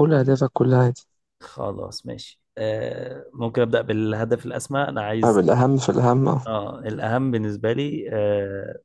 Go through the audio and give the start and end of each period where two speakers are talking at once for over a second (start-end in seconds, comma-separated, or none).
none